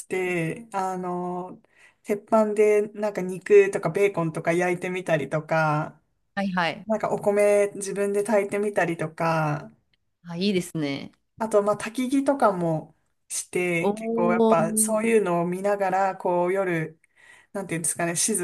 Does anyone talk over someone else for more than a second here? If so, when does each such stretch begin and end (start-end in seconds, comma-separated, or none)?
13.8-15.1